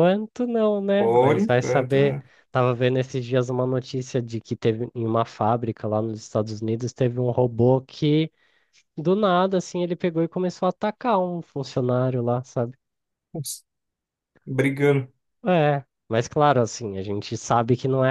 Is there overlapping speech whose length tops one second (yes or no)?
yes